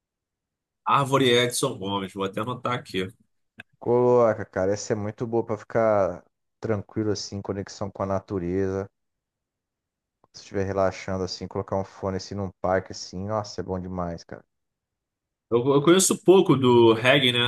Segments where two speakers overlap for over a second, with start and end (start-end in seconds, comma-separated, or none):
none